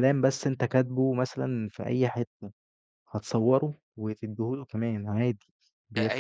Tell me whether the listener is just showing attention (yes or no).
no